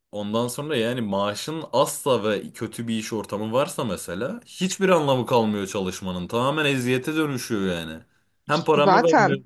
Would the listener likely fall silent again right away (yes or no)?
yes